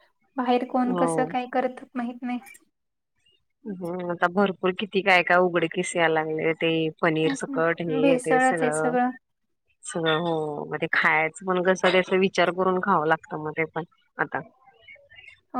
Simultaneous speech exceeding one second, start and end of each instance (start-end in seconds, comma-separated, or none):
7.2-8.7